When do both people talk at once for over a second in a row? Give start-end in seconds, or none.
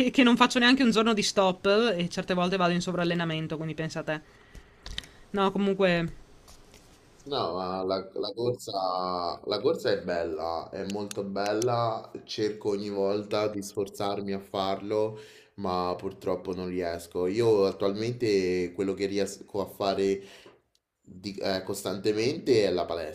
none